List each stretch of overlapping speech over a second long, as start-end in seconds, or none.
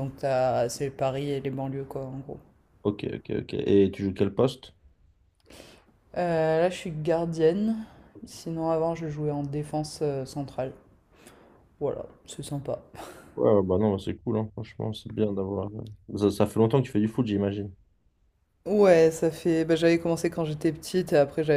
none